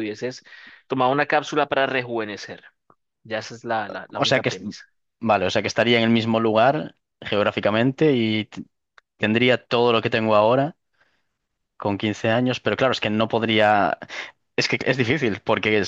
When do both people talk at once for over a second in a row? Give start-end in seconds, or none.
none